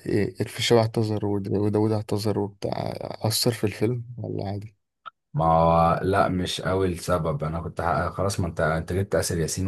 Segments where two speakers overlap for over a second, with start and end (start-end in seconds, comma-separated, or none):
none